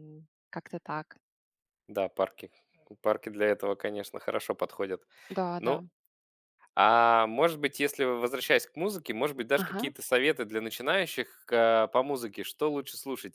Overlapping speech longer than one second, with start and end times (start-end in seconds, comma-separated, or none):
none